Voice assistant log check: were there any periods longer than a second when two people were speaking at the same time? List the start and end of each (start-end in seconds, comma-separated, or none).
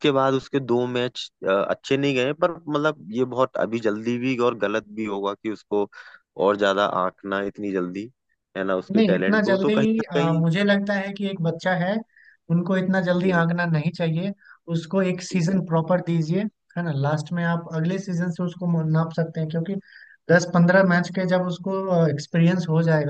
8.9-10.4